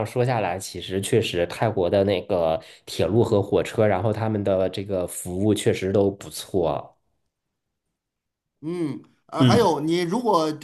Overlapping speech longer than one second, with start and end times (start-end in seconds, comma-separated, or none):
none